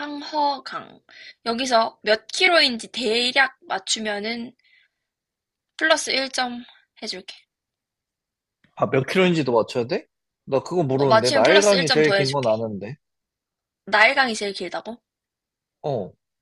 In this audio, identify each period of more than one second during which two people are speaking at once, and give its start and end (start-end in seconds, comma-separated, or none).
10.9-12.5